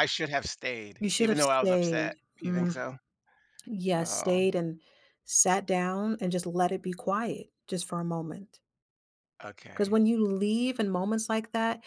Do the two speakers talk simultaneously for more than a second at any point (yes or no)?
yes